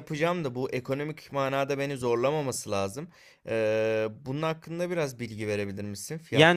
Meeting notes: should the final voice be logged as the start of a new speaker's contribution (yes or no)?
yes